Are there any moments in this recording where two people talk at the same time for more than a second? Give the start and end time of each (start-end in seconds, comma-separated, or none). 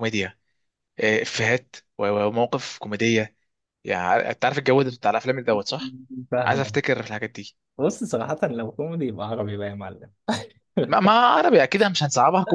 none